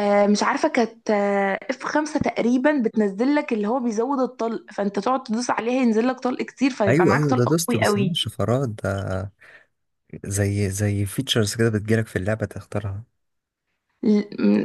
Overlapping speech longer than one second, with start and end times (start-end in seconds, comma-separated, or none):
6.9-8.2